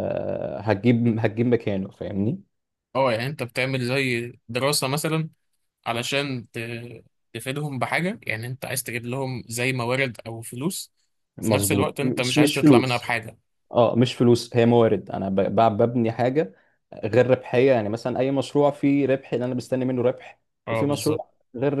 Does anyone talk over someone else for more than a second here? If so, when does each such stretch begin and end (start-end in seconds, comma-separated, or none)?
11.4-13.1